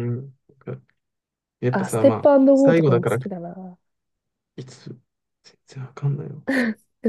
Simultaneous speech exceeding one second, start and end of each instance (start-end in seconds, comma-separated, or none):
1.7-3.2